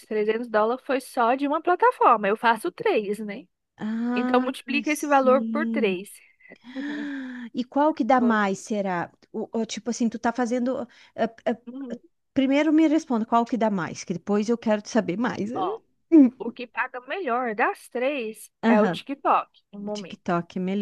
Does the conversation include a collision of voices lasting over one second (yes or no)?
yes